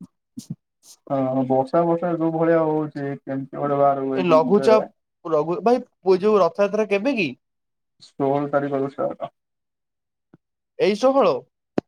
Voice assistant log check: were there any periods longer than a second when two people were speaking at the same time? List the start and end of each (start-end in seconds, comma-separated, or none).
none